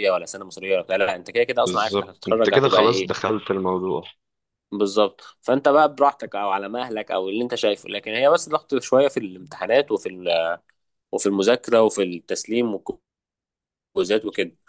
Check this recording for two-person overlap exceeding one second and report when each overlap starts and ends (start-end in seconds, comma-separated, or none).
1.6-3.1